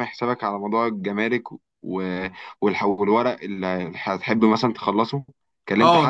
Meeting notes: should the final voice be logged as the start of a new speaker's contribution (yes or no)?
yes